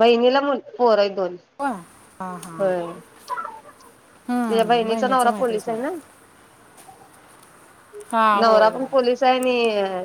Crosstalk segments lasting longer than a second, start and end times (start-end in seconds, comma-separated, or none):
4.3-5.8